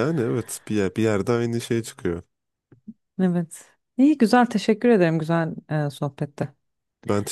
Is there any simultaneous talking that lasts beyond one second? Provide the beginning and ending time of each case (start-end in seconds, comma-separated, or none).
none